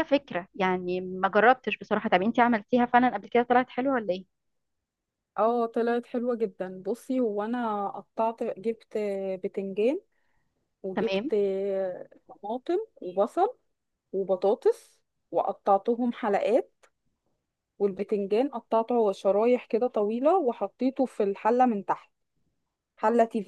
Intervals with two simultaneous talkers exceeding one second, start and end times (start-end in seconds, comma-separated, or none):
none